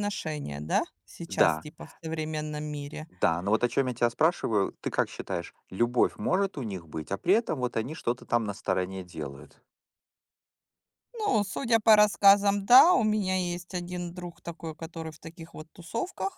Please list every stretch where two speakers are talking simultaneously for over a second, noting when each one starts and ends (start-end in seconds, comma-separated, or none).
none